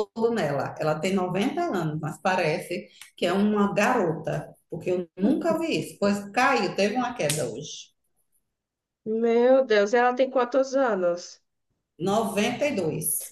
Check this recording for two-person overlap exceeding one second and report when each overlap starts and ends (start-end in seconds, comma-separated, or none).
none